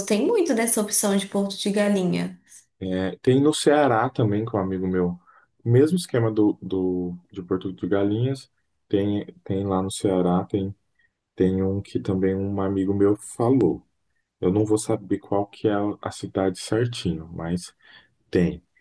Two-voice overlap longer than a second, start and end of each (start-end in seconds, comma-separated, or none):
none